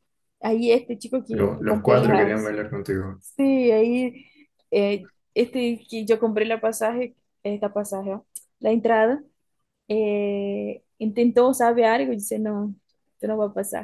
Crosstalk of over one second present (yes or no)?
yes